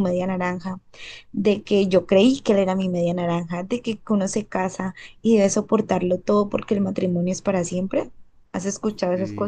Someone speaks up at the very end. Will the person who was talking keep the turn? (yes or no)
no